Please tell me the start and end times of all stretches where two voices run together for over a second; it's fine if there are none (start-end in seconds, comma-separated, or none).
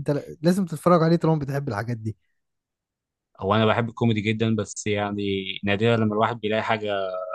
none